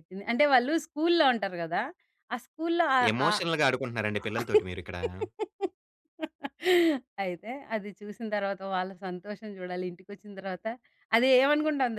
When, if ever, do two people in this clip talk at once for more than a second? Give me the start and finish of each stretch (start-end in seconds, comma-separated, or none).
none